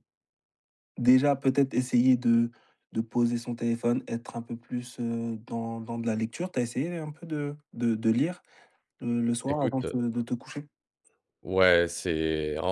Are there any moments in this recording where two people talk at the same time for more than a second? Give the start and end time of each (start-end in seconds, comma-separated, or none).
none